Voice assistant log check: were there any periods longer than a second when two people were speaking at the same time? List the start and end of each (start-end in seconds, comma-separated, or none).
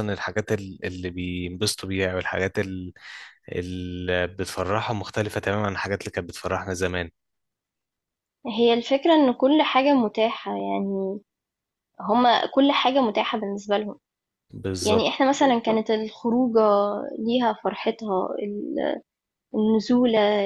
none